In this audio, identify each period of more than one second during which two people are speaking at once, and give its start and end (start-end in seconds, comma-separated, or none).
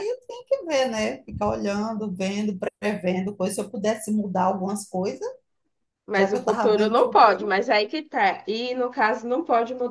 6.1-7.6